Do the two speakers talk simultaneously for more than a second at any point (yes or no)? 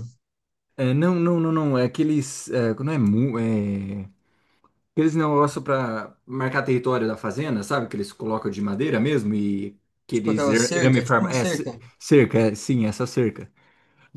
yes